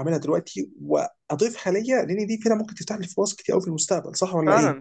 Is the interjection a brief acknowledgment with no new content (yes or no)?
no